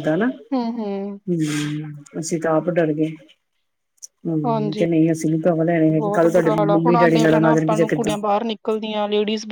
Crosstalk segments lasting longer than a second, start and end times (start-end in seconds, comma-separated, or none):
5.9-8.1